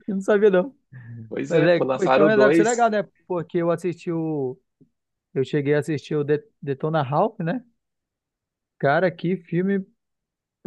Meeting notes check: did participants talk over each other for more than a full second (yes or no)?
yes